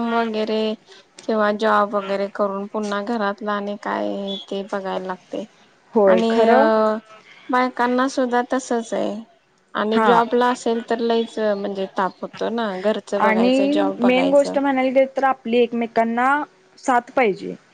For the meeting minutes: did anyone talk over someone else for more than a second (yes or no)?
yes